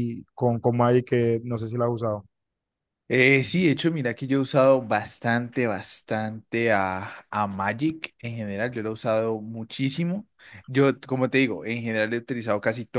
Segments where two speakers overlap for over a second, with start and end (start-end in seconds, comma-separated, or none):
none